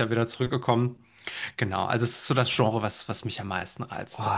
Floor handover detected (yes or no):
yes